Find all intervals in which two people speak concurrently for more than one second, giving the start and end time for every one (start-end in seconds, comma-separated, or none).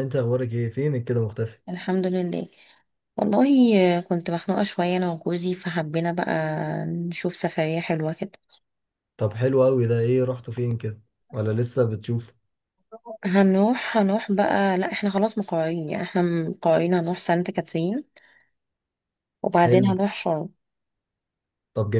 none